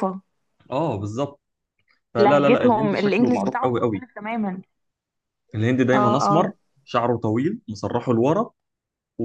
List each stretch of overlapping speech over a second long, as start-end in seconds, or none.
2.2-4.1